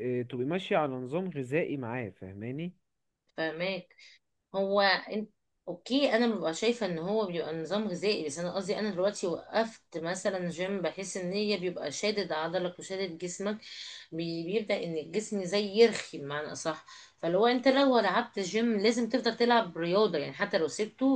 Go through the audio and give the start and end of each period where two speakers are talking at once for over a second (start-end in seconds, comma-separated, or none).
none